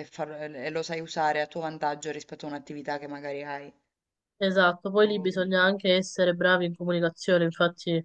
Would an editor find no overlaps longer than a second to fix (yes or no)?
yes